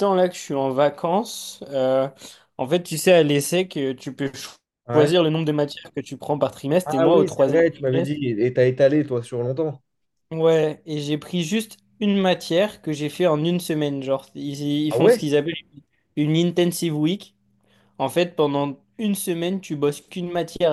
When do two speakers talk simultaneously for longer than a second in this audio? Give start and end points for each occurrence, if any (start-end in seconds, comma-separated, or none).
6.8-8.2